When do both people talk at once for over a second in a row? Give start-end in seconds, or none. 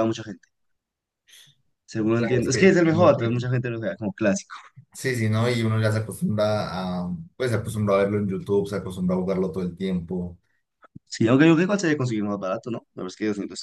2.1-3.4